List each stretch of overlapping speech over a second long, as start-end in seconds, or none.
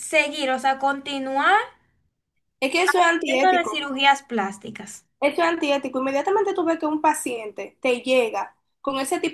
none